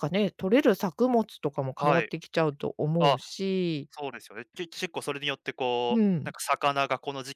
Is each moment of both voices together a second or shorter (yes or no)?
yes